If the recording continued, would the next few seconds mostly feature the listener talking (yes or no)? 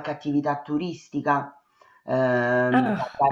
no